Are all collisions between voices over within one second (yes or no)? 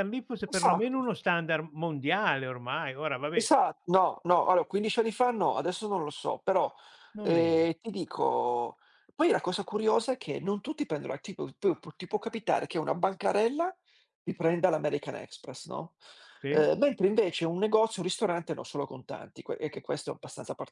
yes